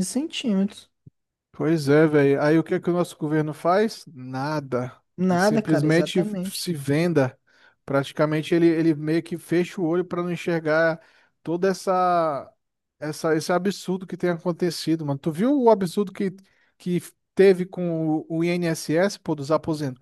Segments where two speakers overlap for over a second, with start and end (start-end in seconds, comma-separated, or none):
5.3-6.7